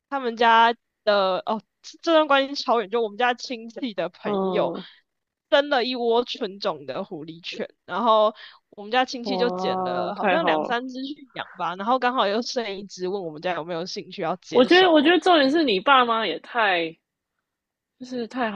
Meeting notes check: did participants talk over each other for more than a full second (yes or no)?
yes